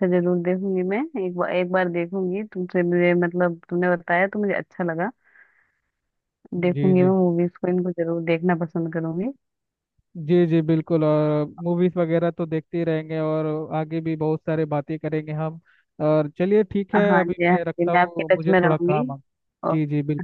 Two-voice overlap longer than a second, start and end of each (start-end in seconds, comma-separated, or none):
17.1-19.0